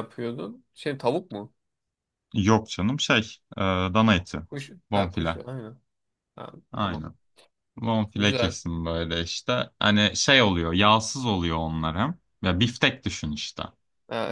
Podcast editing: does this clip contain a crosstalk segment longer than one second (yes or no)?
no